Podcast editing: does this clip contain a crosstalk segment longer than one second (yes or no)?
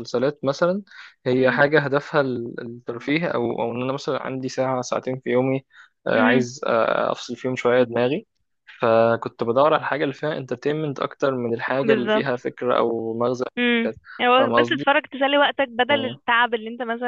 no